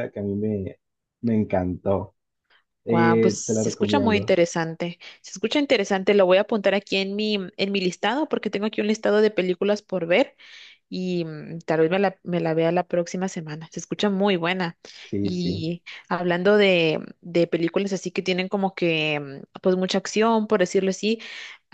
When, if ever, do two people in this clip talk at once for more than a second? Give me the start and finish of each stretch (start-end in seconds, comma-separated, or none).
2.9-4.3